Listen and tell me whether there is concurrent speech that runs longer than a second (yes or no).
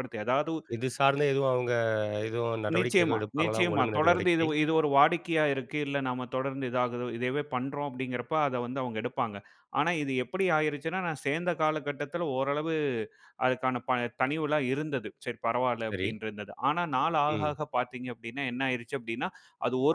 yes